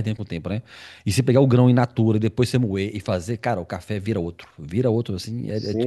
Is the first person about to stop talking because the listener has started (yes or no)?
yes